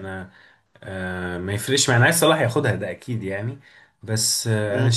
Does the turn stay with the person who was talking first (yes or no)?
yes